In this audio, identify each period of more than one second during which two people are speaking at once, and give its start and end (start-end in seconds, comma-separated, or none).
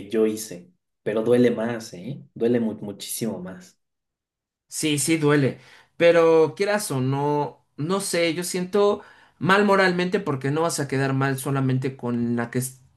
none